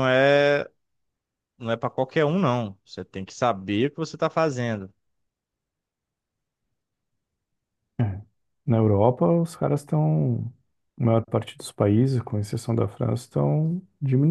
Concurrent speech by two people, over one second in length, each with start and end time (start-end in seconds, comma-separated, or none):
none